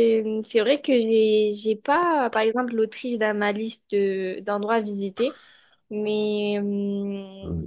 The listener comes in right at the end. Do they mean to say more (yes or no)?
yes